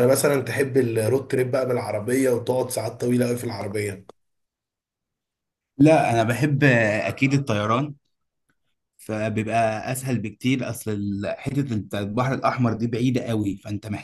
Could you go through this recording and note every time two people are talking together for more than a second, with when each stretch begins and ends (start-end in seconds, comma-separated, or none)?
none